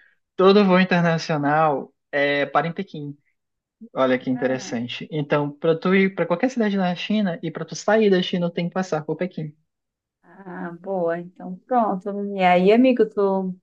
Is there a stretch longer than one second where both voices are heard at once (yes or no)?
no